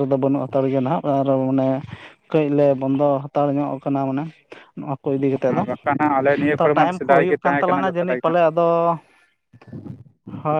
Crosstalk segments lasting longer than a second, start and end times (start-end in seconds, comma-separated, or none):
6.6-8.4